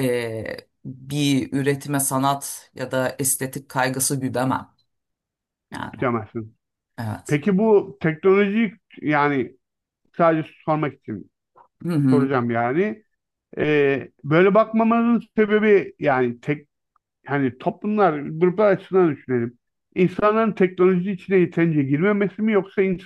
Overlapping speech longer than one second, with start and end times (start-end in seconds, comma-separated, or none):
none